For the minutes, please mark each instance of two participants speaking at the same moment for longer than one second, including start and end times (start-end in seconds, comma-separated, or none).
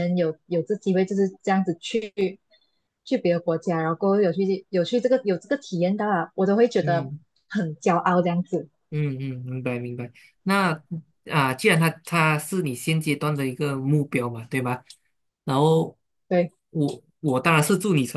none